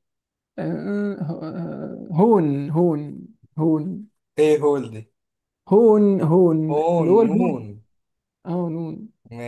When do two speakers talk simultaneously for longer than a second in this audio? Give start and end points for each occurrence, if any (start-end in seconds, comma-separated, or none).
none